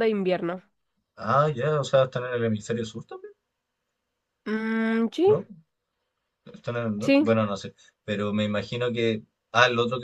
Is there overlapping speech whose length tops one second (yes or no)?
no